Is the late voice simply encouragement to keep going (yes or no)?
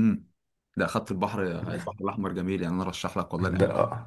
no